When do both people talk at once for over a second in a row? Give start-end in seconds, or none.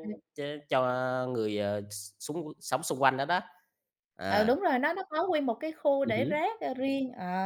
none